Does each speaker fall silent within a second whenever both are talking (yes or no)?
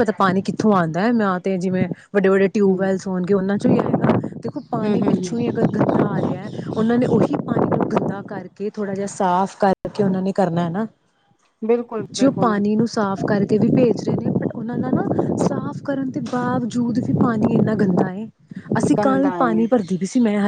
yes